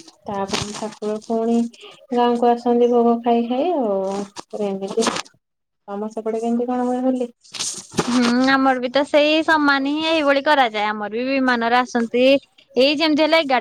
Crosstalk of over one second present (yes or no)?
no